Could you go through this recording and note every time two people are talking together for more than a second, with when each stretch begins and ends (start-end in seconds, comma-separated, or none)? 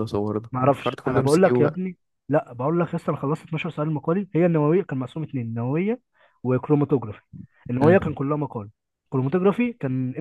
0.5-1.8